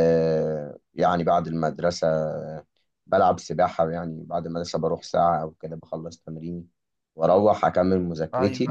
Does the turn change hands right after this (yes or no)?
no